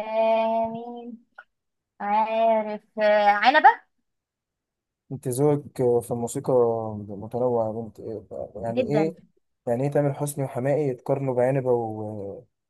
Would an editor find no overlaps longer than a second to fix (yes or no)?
yes